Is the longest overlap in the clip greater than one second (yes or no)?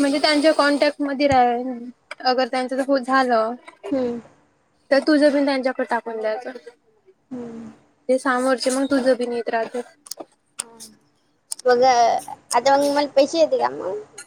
no